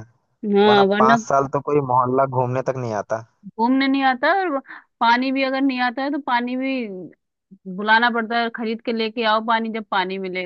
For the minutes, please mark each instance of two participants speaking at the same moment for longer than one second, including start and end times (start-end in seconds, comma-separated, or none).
none